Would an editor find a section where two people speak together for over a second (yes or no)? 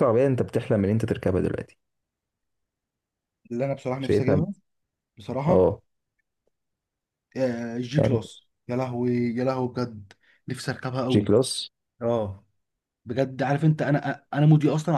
no